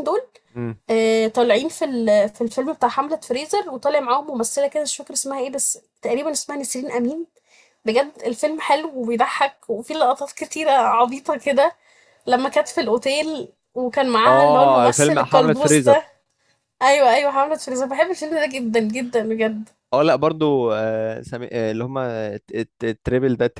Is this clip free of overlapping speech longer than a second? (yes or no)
no